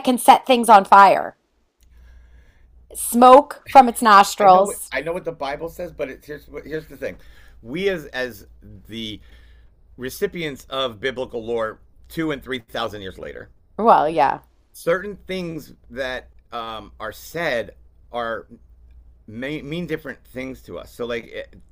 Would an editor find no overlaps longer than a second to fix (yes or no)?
yes